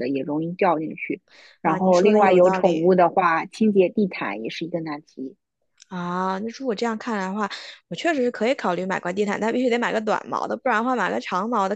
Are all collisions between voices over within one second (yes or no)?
no